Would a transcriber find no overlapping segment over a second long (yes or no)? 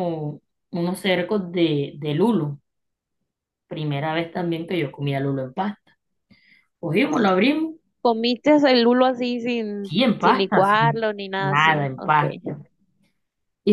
no